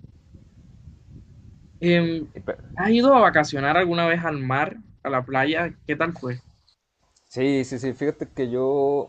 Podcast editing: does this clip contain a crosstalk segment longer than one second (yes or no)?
no